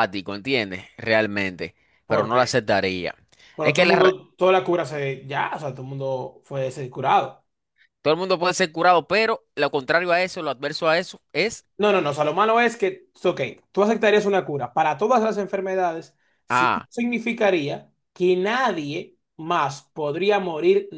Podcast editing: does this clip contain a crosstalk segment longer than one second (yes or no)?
no